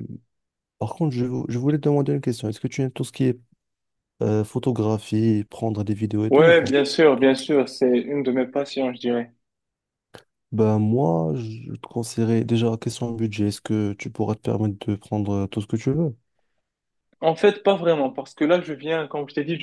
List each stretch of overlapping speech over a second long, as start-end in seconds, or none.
none